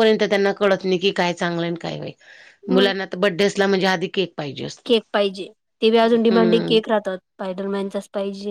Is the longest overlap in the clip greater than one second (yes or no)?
no